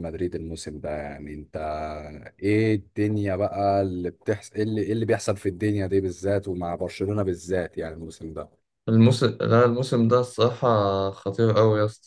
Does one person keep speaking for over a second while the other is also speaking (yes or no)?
no